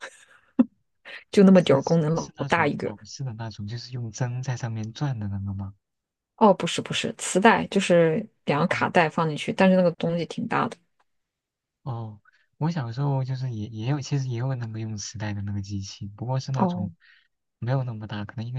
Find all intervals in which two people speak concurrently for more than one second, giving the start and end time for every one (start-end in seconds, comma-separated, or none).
1.5-2.9